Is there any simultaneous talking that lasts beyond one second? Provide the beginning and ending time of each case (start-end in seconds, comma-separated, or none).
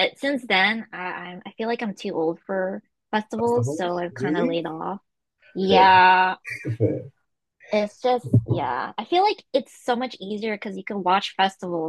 3.4-4.6